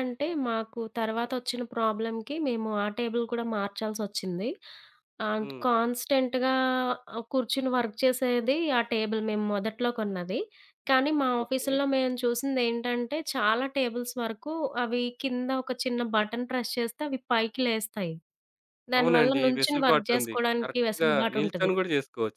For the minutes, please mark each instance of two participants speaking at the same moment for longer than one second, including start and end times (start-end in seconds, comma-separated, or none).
19.0-21.7